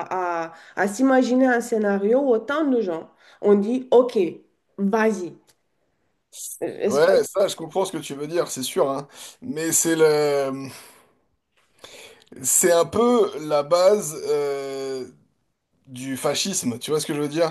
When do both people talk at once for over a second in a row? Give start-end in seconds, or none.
none